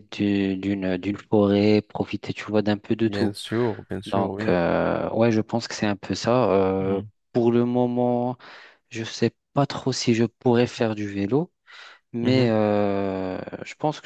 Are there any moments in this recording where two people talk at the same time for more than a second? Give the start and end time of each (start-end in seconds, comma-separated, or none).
none